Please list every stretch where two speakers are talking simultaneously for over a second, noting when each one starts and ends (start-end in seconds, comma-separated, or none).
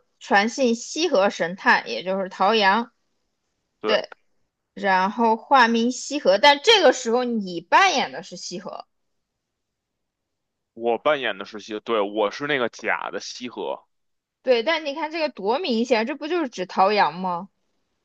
none